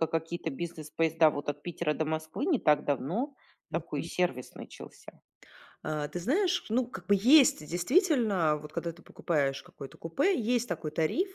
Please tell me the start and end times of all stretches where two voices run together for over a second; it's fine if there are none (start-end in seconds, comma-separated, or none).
none